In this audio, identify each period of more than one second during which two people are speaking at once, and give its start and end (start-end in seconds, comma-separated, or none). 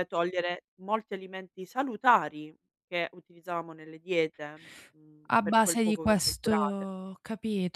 5.3-6.9